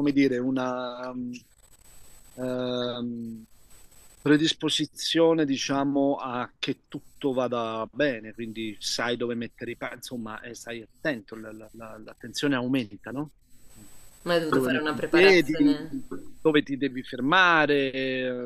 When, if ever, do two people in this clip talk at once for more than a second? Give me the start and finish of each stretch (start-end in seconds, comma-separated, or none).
14.5-15.8